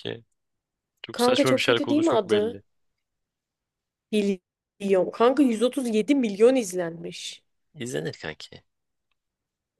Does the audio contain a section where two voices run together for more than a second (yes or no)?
yes